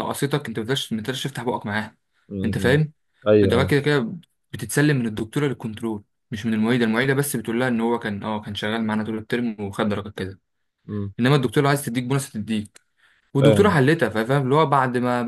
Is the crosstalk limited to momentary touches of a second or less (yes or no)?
yes